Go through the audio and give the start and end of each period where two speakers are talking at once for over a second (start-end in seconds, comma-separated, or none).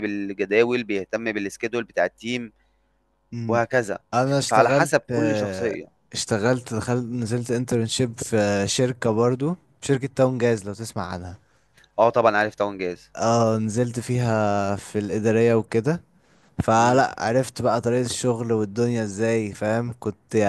4.5-5.8